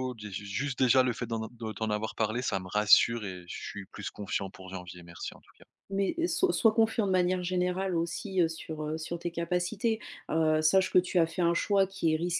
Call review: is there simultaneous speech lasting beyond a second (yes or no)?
no